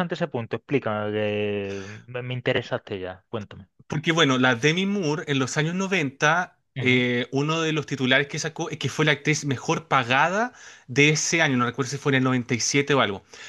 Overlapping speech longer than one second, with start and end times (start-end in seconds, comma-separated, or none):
none